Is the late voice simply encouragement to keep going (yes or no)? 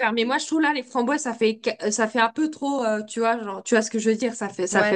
no